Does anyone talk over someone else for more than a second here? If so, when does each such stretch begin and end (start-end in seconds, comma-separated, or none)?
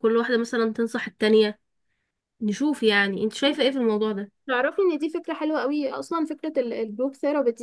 none